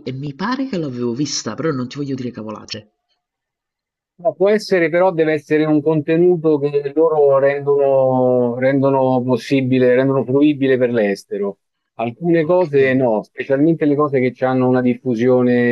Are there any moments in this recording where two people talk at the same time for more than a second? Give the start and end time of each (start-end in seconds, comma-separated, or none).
none